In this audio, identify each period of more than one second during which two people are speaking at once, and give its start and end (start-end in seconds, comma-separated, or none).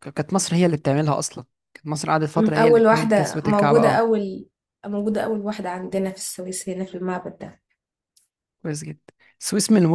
2.4-4.1